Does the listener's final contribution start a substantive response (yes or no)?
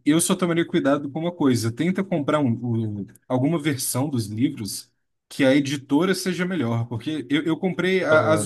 no